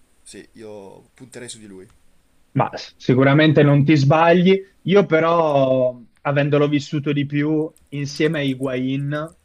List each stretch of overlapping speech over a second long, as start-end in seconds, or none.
none